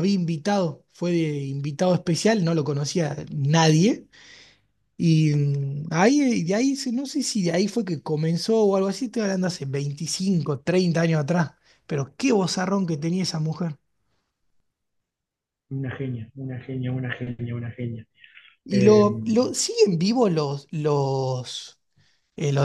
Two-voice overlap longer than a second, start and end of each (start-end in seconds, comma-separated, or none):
none